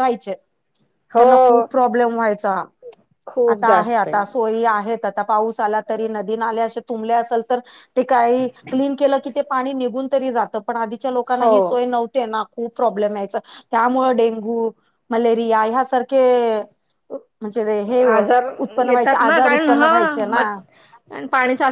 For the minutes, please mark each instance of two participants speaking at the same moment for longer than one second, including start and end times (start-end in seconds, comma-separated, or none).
18.9-20.5